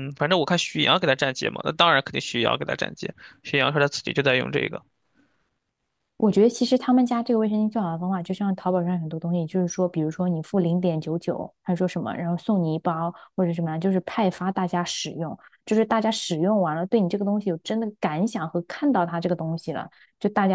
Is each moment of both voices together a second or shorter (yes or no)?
yes